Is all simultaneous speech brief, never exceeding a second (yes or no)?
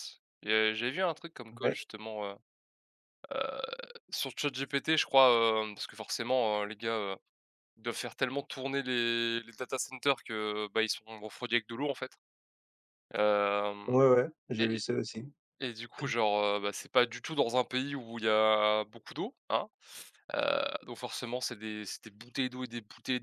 yes